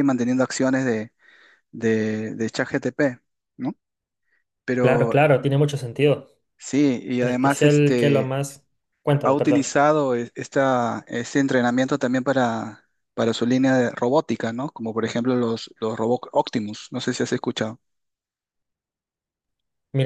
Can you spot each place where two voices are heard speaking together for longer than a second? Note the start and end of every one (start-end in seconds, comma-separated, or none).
7.2-8.4